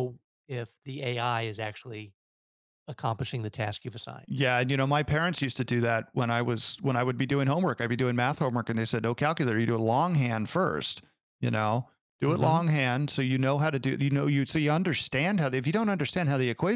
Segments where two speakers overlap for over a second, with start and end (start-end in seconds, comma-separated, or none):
none